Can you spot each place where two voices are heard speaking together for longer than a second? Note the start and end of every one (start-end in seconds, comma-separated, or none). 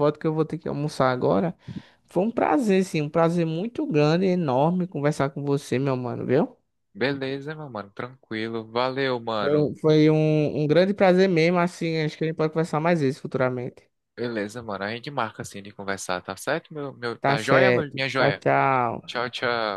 17.2-18.4